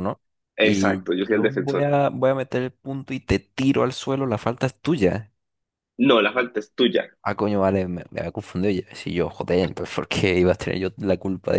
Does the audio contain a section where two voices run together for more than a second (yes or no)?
yes